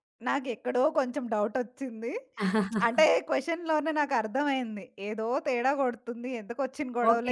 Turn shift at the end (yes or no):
yes